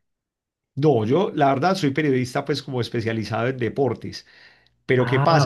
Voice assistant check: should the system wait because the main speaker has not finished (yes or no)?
yes